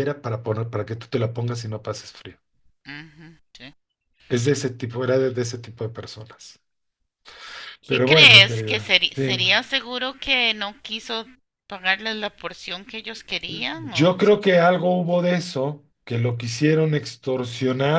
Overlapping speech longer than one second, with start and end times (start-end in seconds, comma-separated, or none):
7.9-9.4